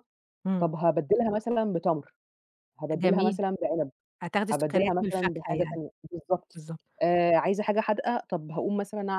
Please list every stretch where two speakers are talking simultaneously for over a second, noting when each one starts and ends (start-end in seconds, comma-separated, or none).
4.5-5.8